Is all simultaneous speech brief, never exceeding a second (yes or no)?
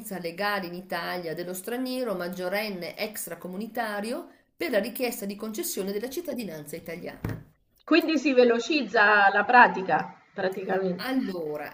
yes